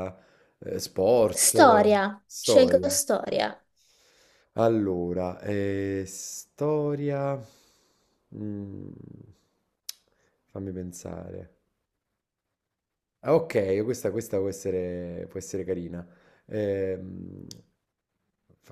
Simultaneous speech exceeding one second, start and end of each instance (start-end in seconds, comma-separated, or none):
1.3-3.0